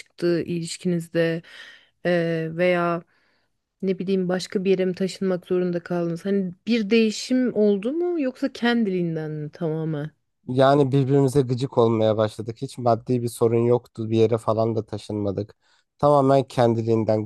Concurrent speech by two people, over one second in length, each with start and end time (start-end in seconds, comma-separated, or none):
none